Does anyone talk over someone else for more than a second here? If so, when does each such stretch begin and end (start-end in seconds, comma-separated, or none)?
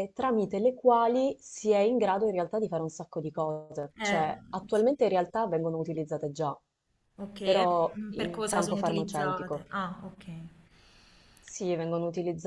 7.4-9.6